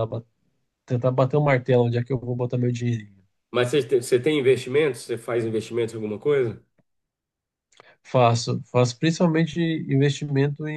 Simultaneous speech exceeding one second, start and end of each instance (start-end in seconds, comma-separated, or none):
none